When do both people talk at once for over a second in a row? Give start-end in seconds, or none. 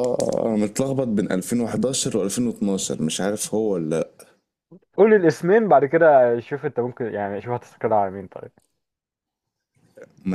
none